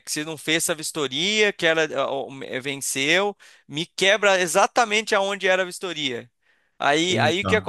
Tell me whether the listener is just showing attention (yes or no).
yes